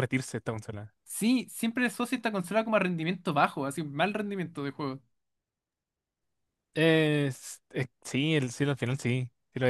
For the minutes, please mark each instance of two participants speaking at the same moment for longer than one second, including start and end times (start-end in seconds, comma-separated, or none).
none